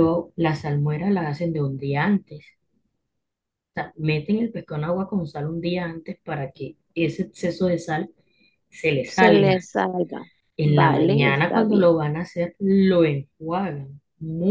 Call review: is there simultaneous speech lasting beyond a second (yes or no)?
yes